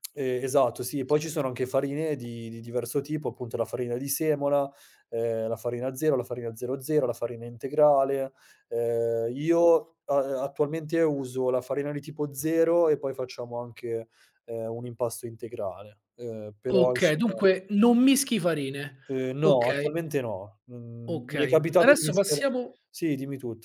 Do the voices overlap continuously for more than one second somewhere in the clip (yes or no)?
yes